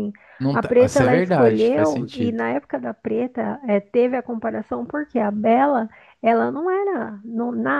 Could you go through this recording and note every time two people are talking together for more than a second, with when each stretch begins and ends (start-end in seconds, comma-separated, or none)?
0.5-2.4